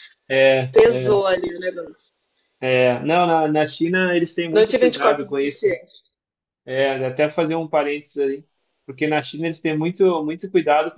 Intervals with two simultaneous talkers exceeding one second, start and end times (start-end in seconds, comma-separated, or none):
4.5-5.7